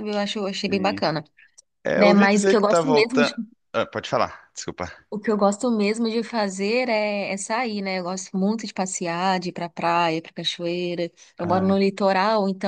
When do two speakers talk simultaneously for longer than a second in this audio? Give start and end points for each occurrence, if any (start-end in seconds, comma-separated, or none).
1.9-3.3